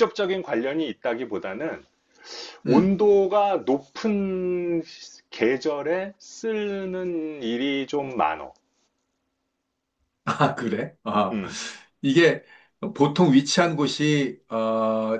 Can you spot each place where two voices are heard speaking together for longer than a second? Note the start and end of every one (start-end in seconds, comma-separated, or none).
none